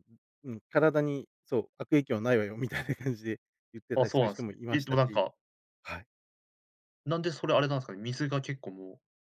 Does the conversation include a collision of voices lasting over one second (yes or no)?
yes